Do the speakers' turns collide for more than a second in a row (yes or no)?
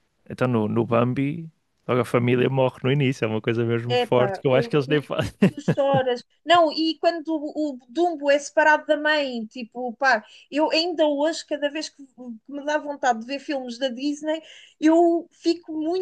yes